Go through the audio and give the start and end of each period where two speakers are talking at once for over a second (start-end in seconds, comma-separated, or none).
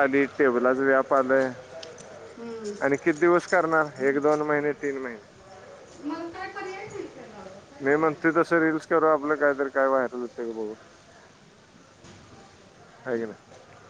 none